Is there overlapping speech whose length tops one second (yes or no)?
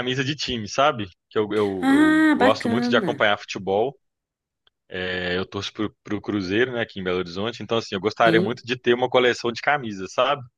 yes